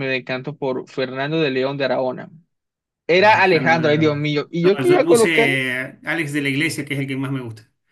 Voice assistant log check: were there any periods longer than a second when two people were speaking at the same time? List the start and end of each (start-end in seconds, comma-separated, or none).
3.2-5.5